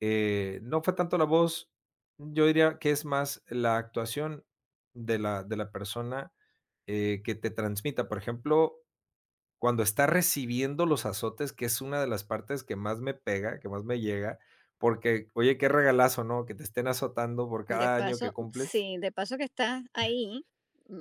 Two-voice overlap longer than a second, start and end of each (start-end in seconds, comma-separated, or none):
17.7-18.9